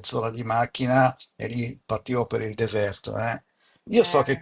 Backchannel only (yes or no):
yes